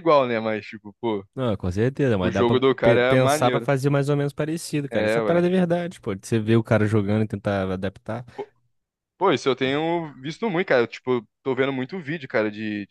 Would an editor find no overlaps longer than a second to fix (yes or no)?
no